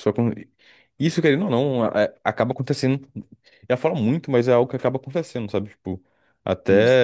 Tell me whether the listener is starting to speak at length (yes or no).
no